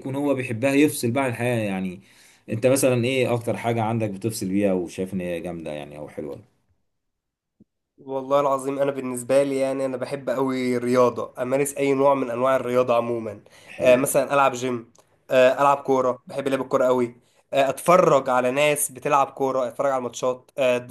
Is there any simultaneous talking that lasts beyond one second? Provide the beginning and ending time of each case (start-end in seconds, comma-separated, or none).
none